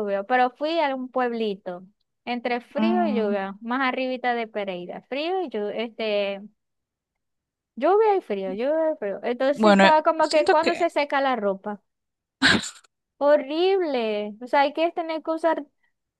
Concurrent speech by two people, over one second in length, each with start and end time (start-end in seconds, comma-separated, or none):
9.5-10.9